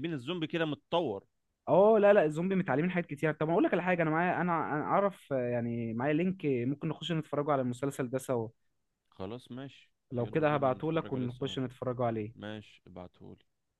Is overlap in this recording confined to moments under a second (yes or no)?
no